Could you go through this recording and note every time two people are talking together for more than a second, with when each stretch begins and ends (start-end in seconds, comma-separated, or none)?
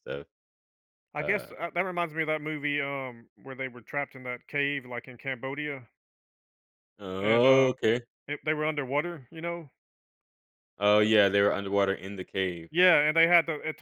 none